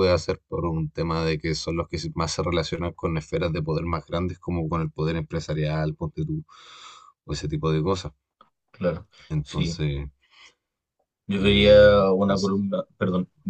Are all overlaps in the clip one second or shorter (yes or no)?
no